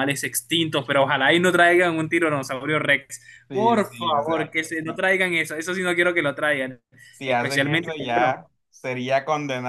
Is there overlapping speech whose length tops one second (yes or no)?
yes